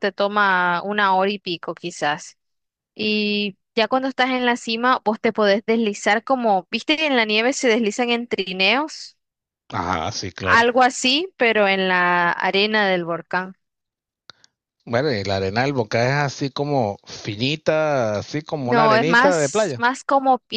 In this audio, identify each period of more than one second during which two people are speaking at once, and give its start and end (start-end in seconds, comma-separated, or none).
18.6-19.8